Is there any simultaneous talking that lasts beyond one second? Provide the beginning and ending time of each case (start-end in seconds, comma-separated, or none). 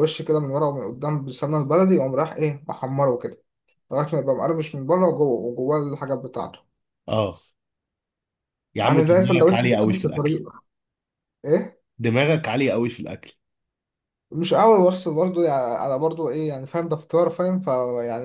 8.8-10.4